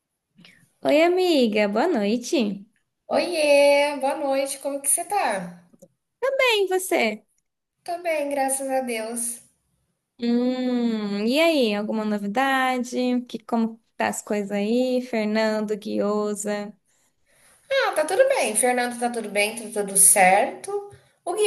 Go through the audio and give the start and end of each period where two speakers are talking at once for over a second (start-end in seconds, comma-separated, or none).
none